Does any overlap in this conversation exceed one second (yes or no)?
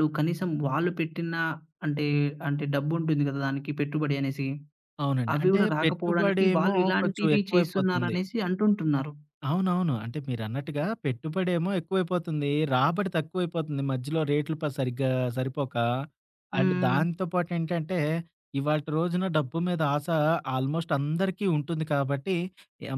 yes